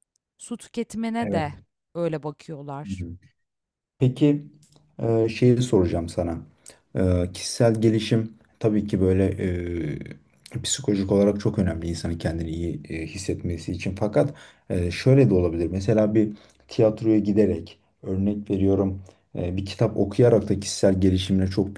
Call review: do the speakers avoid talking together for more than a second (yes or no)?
yes